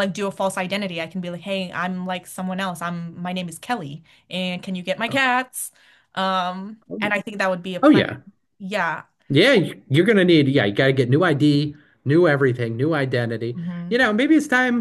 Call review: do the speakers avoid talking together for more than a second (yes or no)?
yes